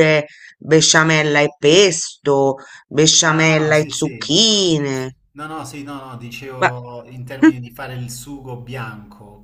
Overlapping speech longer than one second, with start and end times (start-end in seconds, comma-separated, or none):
3.2-4.4